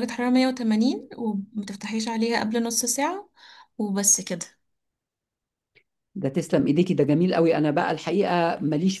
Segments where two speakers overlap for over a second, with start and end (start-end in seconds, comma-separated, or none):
none